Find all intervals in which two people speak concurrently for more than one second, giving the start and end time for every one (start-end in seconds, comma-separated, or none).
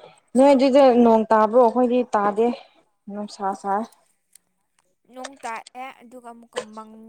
none